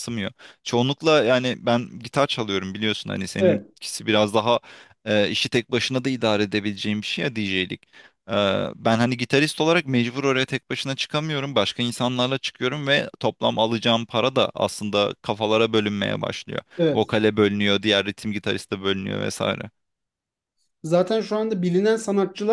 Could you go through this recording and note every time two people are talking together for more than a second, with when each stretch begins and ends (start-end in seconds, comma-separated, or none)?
none